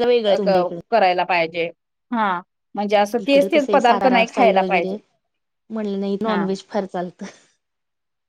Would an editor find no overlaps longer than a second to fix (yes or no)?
no